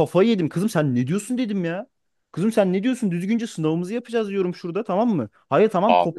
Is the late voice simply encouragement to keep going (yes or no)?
yes